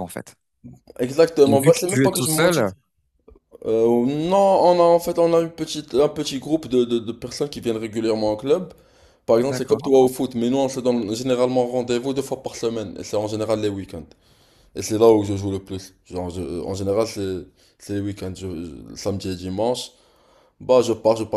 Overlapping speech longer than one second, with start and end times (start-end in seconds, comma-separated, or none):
1.4-2.7